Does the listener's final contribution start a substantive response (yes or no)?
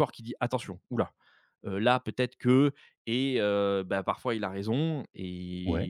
no